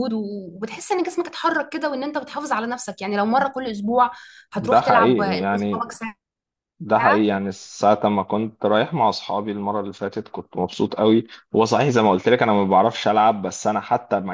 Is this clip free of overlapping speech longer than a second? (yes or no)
no